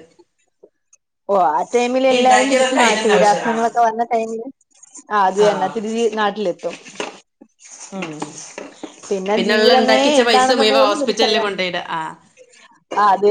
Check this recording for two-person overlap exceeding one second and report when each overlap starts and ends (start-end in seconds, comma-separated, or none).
2.1-3.5, 9.6-11.4